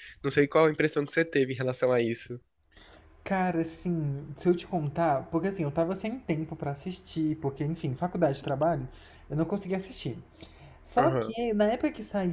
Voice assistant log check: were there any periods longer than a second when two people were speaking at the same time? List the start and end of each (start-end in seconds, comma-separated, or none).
none